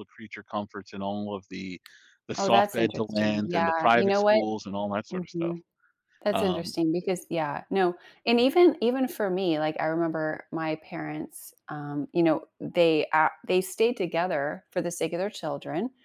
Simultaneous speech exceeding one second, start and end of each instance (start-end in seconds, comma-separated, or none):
2.4-4.4